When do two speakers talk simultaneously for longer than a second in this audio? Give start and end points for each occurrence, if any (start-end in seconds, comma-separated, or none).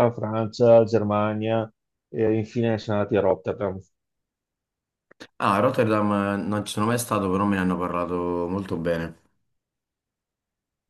none